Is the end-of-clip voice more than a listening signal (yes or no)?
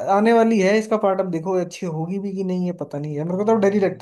no